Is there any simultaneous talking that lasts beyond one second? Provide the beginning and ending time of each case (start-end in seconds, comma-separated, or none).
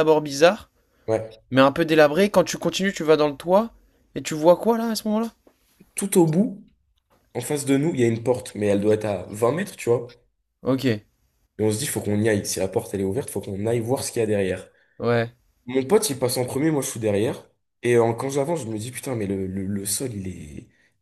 none